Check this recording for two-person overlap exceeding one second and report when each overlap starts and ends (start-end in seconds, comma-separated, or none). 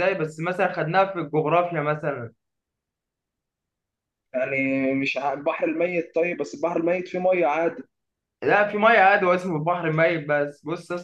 none